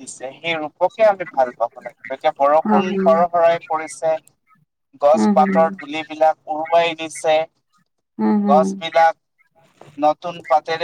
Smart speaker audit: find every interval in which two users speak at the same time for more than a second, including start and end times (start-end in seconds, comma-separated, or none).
none